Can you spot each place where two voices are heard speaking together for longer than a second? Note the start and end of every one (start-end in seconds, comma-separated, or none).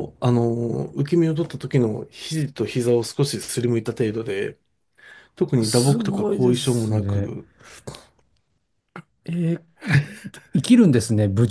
5.6-7.2